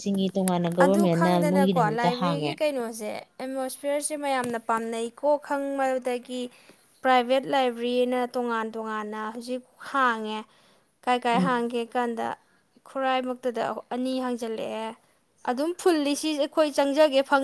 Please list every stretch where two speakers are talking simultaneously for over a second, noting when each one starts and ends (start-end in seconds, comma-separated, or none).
0.8-2.5